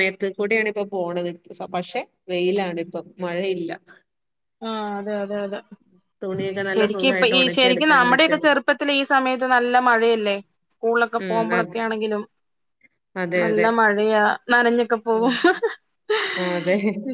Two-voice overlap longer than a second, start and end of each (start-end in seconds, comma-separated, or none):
6.7-8.4